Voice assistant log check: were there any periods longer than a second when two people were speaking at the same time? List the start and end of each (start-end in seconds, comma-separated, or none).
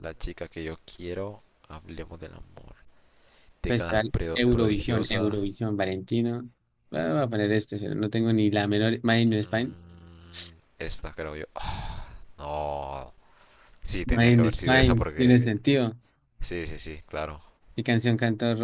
3.7-5.4, 14.0-15.4